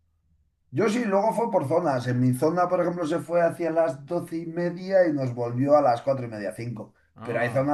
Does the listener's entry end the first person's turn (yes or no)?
no